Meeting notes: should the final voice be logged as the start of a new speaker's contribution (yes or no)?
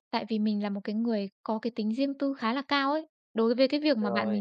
no